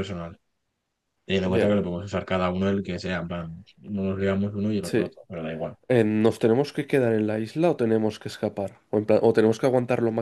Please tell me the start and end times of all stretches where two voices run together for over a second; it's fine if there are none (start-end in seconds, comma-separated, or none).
none